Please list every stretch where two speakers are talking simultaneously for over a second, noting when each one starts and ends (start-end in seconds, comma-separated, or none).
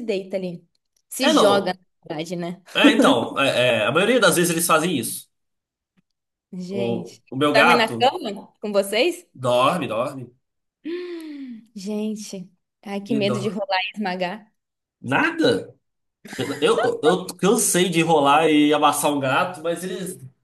6.7-8.2